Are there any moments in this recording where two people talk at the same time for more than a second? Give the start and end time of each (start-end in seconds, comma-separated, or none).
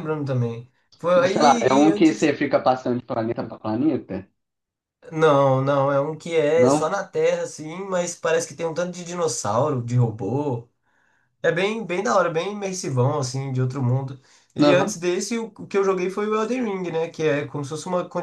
1.1-2.4